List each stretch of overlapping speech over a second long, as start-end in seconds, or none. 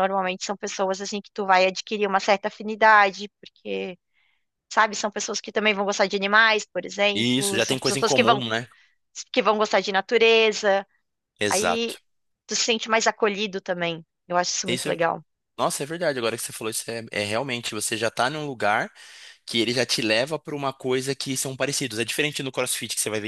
7.1-8.4